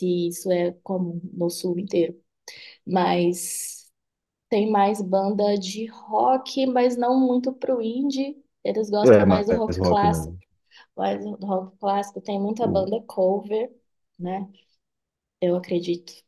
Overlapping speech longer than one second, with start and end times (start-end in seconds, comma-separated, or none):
9.0-10.4